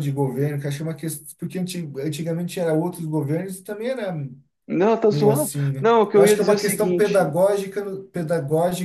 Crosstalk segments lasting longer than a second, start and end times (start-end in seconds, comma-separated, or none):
5.1-7.3